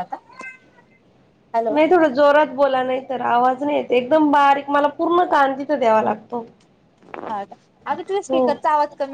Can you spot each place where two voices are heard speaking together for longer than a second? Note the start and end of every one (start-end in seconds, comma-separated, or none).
none